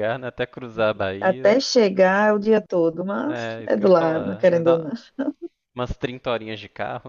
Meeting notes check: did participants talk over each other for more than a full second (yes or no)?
yes